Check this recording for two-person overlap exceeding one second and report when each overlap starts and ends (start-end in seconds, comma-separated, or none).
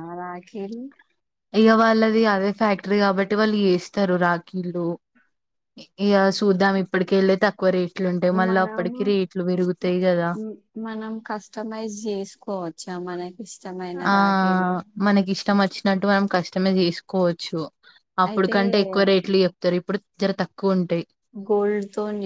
none